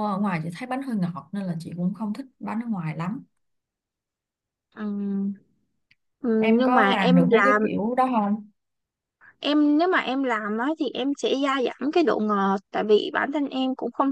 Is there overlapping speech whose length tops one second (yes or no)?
yes